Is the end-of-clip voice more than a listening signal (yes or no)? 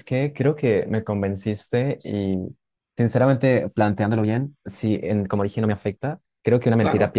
no